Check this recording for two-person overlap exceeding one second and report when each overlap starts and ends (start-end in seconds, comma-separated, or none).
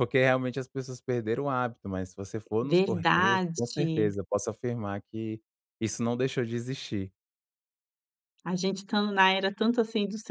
2.6-4.1